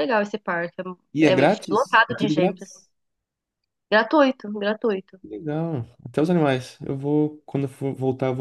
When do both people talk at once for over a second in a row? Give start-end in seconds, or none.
1.2-2.8